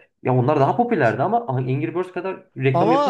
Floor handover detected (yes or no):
yes